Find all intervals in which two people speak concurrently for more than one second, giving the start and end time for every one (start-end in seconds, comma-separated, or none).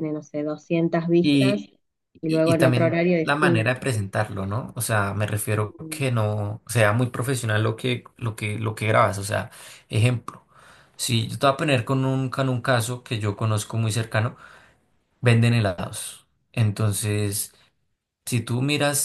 2.3-3.8